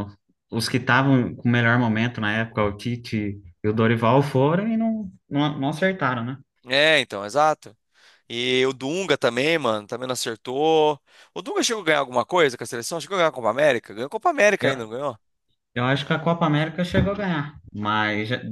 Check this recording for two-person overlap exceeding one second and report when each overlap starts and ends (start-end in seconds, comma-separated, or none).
none